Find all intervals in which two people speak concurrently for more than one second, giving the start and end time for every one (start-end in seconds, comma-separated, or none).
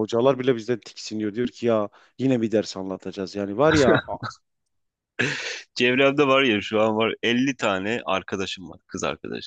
none